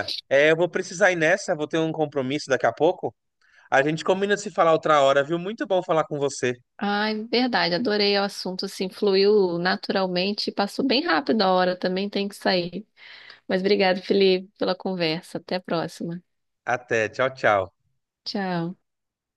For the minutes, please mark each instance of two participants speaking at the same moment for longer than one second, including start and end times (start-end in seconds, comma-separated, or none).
none